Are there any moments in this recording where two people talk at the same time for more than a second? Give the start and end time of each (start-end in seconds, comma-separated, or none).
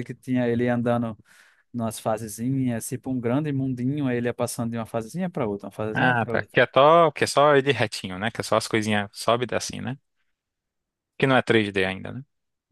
none